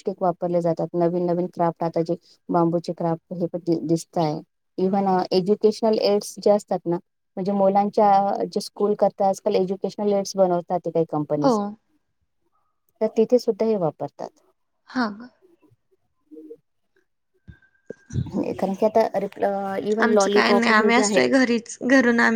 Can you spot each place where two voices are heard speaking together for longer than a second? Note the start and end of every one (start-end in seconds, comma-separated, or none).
20.0-21.3